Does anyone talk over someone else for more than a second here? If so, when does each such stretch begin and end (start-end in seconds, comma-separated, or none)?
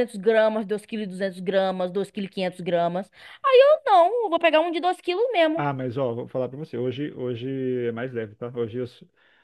none